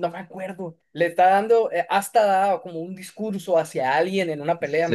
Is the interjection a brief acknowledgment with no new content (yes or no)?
no